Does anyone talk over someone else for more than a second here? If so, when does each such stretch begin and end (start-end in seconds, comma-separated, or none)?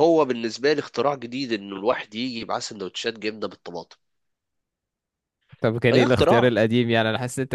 none